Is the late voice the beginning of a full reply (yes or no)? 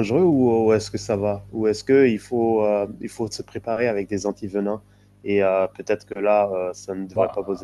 yes